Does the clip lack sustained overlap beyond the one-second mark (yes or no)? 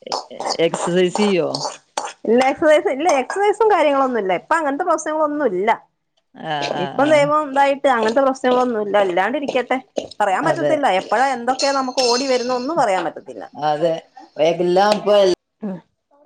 yes